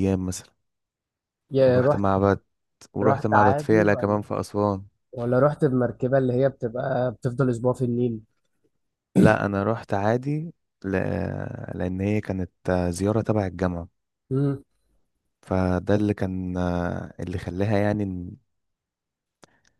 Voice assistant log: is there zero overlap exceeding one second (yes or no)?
no